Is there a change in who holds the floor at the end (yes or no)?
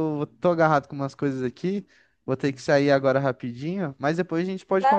yes